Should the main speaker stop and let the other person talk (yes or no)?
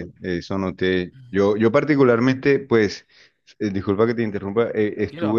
no